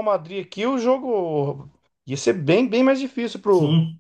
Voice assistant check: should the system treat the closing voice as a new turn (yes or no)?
yes